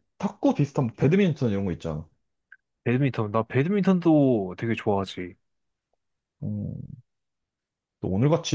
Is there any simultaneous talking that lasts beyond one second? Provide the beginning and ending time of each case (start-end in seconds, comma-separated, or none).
none